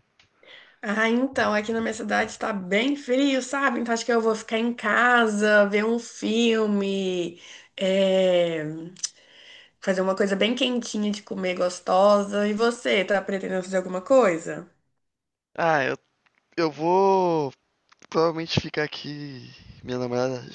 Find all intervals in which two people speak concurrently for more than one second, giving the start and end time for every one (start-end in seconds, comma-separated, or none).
none